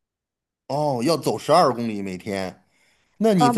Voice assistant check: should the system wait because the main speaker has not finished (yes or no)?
no